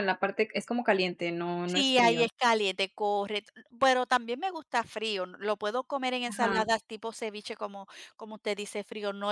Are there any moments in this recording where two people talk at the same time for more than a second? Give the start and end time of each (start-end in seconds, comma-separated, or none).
none